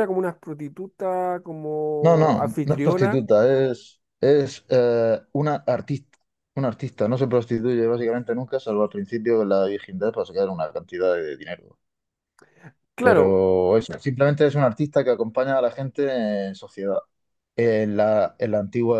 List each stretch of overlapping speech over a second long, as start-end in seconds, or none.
2.0-3.2